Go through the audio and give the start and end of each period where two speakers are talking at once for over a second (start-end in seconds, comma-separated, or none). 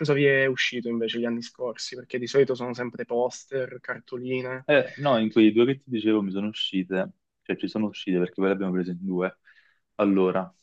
none